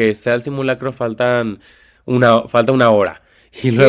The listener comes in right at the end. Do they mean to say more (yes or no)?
yes